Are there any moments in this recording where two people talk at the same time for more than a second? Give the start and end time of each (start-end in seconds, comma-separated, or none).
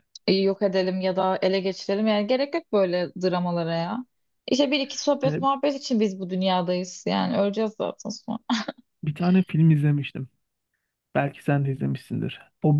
none